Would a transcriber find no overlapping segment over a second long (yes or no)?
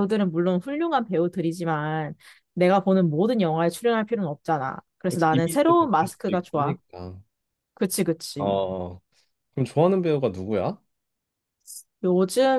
no